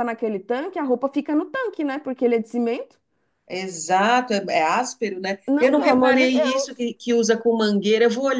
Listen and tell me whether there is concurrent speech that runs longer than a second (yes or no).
yes